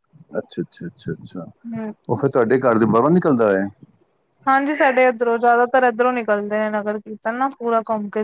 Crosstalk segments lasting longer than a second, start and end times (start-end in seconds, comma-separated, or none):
none